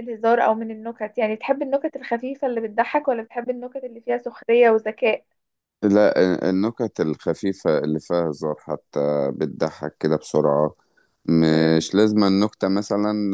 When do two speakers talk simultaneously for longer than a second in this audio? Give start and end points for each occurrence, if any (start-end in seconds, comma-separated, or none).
none